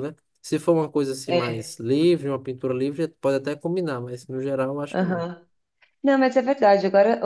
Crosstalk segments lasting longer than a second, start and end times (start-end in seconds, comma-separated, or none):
none